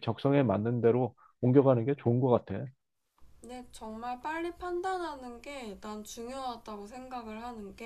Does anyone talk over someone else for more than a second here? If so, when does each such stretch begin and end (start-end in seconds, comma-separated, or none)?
none